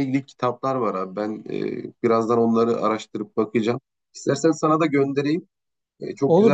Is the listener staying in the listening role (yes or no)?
no